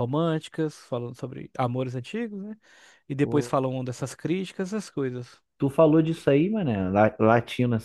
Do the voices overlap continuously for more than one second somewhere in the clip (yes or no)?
no